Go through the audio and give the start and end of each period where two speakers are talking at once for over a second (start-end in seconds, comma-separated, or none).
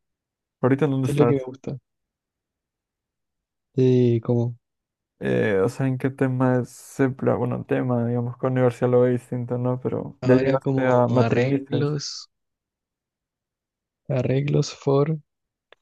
10.2-11.9